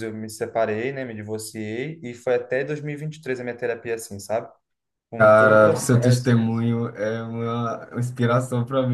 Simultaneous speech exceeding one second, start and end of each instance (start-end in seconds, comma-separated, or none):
5.2-6.5